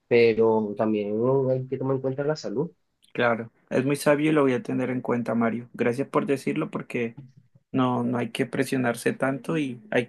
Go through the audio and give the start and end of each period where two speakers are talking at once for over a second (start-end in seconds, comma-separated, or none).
none